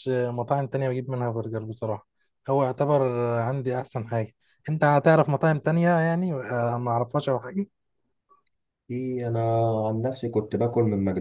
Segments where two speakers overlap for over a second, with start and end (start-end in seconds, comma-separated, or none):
none